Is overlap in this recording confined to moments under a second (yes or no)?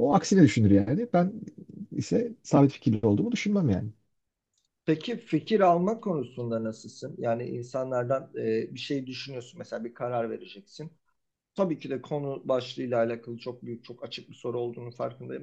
yes